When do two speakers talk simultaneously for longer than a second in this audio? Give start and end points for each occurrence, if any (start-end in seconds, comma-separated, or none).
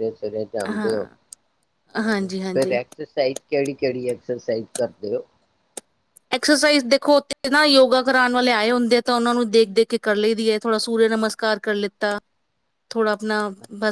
none